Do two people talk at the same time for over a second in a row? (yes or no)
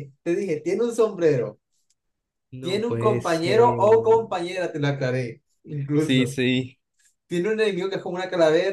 yes